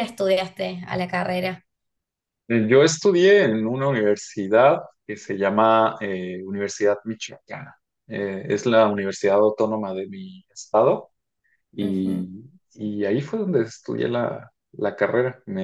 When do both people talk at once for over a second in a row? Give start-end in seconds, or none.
none